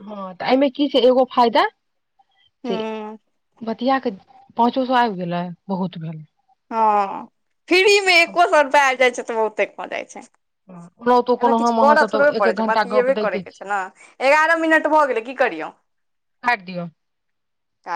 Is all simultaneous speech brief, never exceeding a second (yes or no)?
no